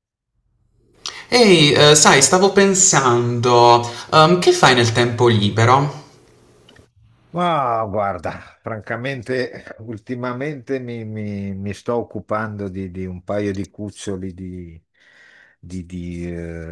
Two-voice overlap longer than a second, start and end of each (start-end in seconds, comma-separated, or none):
none